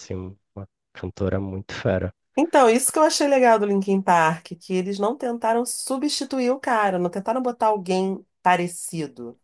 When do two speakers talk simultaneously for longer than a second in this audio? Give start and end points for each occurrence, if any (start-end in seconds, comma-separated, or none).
none